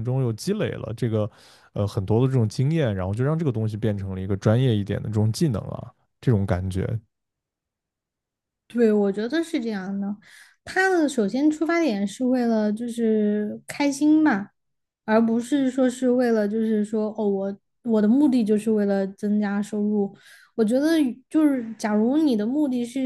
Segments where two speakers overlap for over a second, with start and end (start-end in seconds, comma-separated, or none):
none